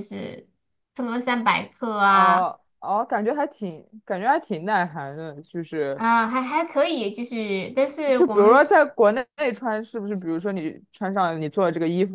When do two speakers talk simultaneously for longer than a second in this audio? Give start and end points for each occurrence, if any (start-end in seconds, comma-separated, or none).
none